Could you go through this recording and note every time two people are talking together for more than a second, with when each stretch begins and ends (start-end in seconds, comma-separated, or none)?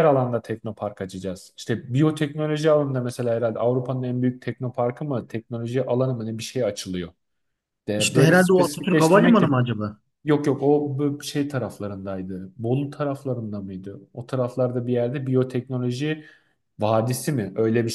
8.0-9.5